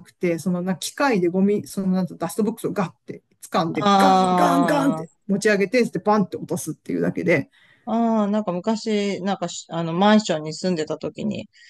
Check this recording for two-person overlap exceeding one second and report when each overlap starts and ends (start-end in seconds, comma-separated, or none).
3.8-5.0